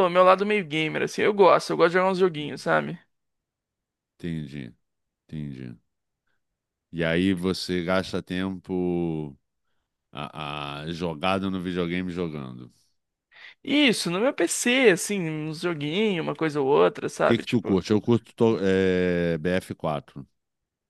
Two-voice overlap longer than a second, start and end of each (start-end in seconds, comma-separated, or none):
none